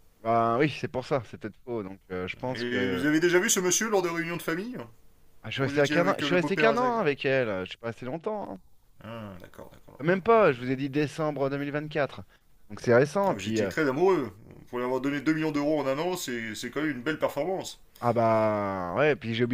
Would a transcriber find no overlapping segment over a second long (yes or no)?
no